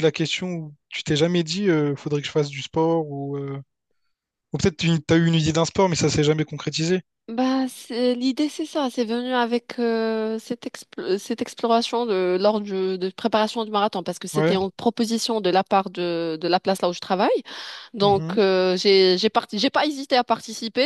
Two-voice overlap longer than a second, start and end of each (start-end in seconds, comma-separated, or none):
none